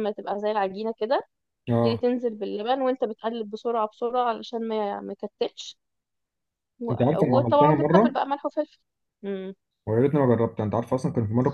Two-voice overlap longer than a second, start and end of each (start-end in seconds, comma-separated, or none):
6.9-8.1